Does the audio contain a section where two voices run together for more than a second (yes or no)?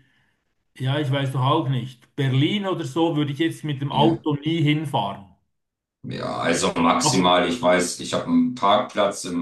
no